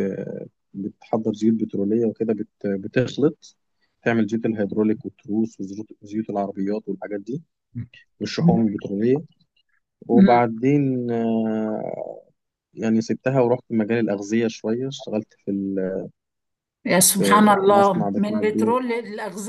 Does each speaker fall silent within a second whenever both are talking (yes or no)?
no